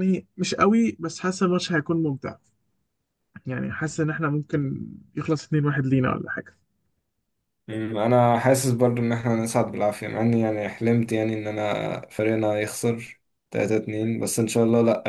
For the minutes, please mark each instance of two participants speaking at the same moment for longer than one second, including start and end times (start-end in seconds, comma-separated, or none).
none